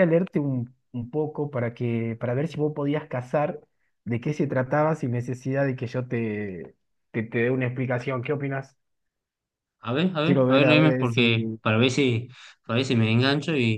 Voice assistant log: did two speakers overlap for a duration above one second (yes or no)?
yes